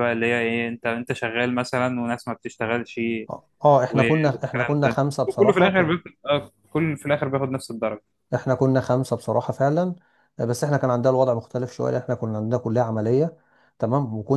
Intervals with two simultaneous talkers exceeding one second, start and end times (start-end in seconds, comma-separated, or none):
3.9-6.0